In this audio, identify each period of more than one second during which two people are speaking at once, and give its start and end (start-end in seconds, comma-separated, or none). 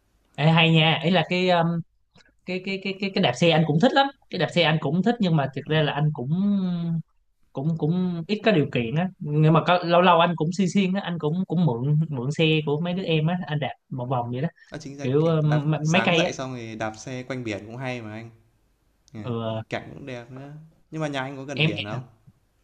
15.0-16.3